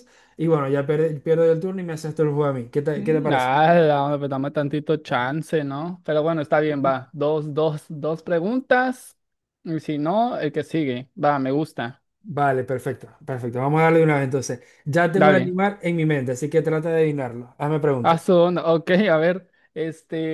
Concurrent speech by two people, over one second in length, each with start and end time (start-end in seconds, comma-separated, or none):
none